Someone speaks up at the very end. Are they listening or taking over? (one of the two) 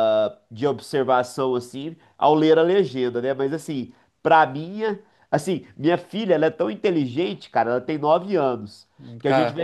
listening